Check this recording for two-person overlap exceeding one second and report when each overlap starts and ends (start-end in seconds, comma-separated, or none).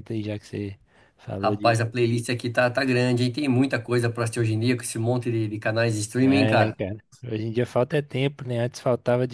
none